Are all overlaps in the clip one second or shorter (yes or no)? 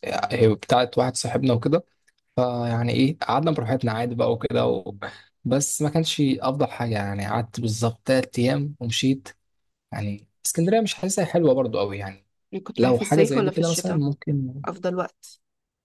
no